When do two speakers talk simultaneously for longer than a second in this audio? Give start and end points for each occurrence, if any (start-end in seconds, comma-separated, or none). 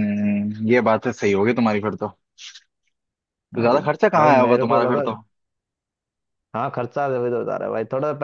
3.5-5.0